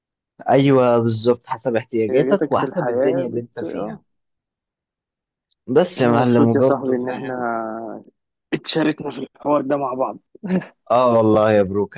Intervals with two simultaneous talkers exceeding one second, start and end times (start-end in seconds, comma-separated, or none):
2.0-4.0, 6.0-7.3